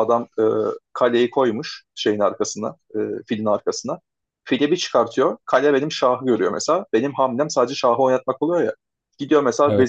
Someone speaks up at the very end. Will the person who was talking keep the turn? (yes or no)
yes